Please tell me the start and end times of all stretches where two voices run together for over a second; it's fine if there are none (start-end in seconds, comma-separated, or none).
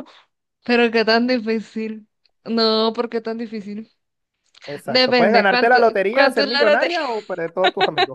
4.8-7.0